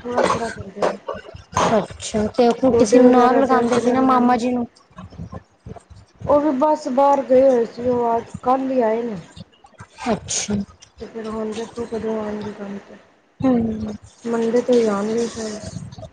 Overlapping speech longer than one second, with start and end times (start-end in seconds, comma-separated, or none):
2.7-4.4